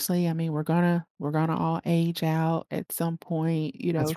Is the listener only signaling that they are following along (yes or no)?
yes